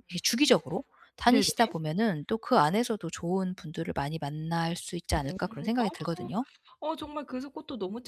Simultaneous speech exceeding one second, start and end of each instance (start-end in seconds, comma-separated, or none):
none